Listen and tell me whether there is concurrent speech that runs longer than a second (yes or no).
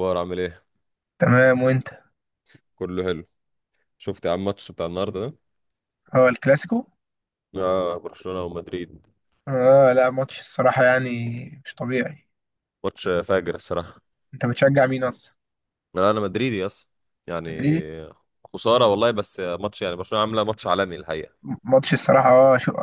no